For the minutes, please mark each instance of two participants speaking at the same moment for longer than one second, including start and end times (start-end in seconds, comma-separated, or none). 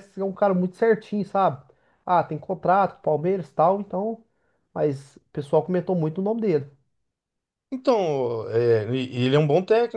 none